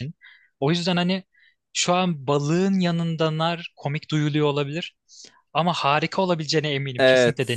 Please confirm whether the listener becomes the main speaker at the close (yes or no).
yes